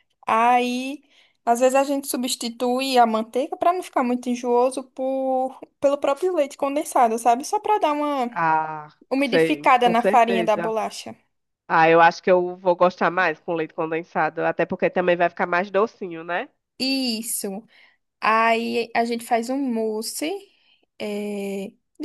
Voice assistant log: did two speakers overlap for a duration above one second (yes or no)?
yes